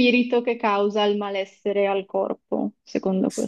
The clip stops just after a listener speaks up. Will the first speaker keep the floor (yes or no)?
no